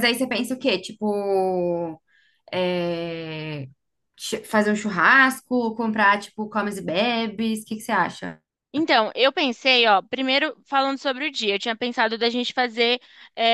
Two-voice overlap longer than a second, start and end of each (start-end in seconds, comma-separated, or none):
none